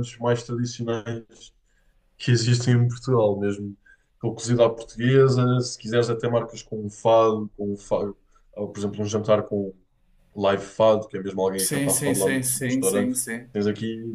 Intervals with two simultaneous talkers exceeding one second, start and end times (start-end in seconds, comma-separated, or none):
11.6-13.2